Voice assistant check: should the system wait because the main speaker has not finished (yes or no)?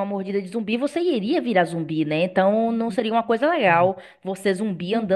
no